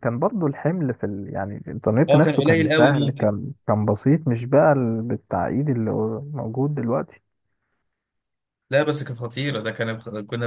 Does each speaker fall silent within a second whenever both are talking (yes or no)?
no